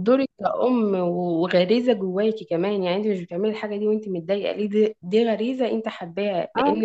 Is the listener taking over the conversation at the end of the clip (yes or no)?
no